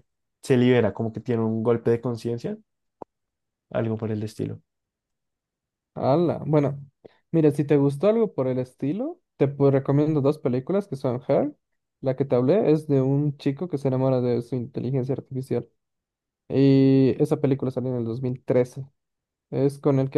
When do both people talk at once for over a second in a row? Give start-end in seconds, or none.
none